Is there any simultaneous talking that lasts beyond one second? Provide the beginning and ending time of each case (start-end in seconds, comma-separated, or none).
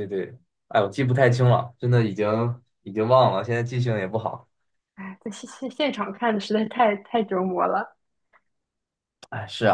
none